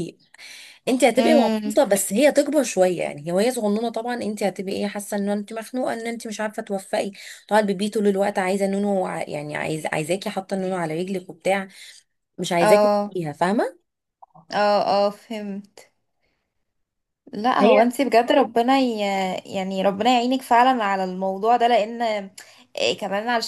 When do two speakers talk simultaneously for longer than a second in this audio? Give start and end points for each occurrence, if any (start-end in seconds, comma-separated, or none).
none